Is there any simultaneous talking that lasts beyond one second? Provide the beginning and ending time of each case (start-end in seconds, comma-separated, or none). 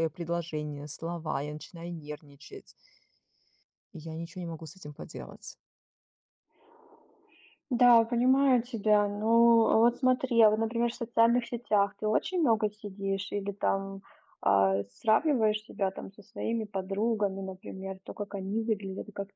none